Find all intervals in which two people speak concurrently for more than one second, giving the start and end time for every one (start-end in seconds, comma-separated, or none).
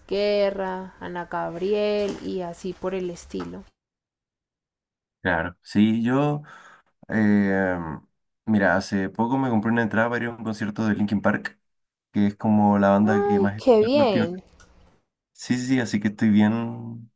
13.0-14.4